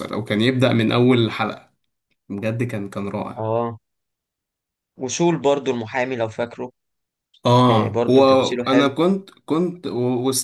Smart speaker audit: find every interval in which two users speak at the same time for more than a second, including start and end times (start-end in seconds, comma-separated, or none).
7.7-8.9